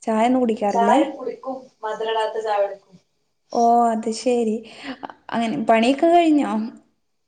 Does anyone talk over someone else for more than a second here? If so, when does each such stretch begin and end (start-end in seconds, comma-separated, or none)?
none